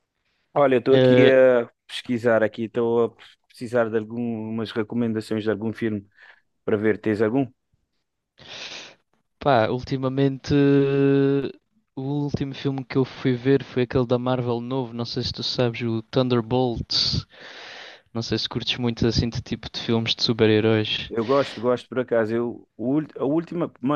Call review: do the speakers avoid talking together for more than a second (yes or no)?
yes